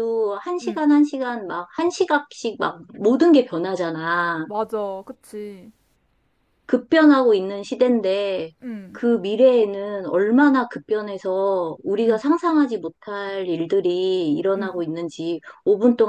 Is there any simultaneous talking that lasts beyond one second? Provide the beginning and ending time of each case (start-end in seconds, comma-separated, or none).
none